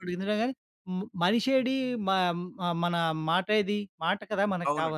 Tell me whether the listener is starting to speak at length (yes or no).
yes